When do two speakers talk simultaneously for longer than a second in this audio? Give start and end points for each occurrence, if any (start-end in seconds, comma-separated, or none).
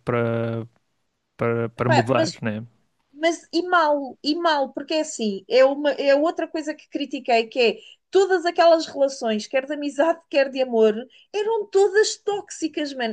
none